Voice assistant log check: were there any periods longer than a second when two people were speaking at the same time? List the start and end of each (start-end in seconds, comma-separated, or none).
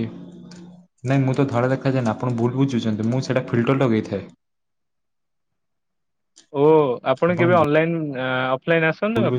none